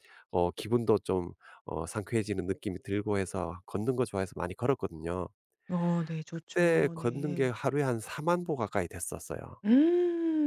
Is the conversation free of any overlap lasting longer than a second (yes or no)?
no